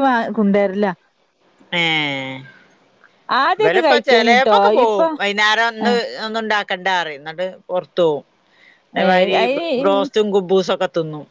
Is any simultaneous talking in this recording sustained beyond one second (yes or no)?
yes